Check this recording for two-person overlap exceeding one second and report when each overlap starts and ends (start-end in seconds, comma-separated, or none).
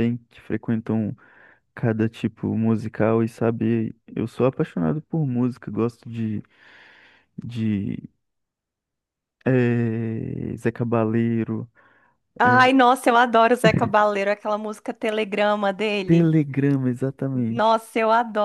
none